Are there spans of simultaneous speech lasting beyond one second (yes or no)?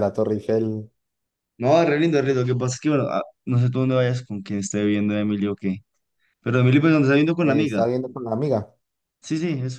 no